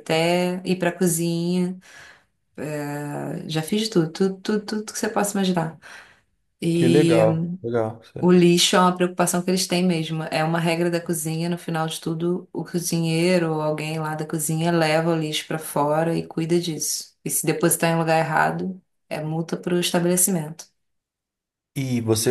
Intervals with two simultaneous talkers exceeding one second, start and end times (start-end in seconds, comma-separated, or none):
none